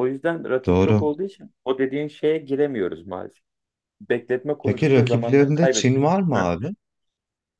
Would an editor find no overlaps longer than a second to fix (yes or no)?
no